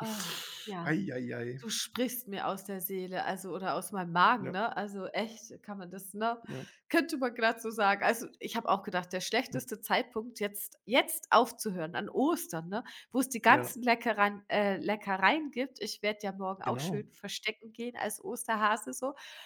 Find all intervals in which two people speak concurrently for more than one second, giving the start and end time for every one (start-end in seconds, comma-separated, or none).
none